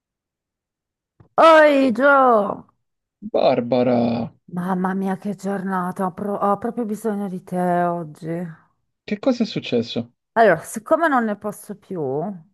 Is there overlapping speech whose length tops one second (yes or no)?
no